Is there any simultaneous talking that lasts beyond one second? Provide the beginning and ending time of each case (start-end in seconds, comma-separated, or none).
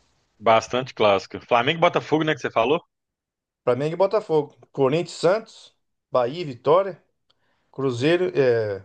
none